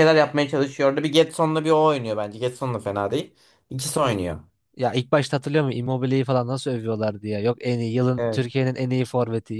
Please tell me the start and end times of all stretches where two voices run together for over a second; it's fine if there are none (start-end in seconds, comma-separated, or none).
none